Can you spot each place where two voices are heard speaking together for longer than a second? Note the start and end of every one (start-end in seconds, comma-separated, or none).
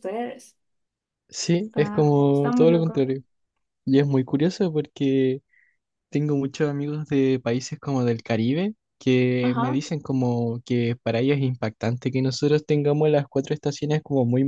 1.7-3.1